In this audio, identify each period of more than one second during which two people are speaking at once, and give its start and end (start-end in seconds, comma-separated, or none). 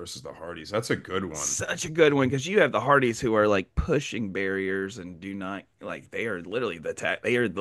none